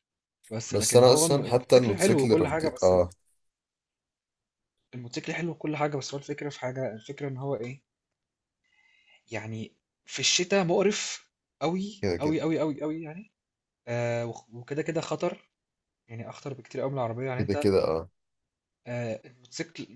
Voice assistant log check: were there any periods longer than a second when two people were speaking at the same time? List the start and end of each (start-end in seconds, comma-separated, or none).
0.7-2.9